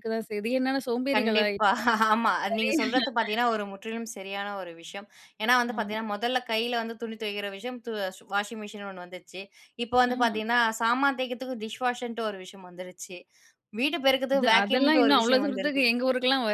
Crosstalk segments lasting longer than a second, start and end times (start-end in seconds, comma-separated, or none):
14.3-15.8